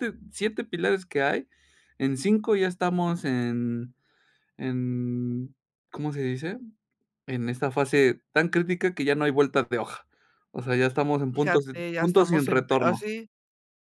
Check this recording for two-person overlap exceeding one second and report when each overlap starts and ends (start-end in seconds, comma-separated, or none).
11.3-13.1